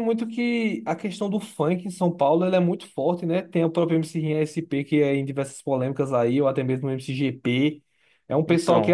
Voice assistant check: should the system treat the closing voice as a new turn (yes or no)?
no